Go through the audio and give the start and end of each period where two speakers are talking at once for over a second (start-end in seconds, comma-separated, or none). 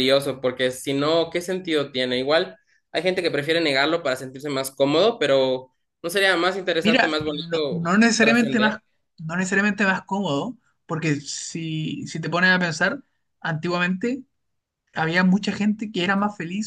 6.8-8.8